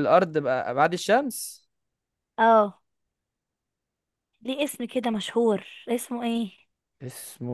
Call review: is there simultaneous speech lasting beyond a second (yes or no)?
no